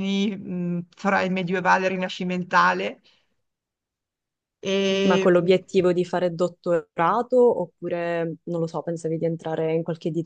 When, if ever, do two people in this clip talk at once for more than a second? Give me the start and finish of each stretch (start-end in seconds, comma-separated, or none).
none